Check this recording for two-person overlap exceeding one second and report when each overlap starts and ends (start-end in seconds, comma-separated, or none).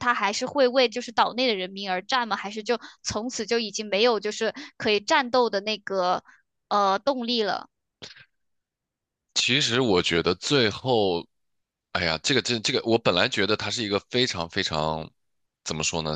none